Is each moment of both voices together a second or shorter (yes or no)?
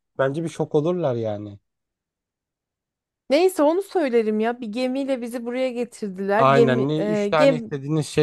no